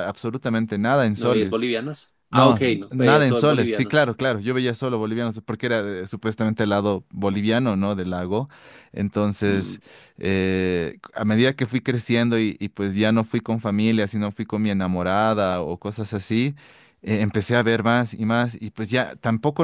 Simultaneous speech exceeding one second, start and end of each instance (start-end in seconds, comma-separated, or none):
2.3-4.1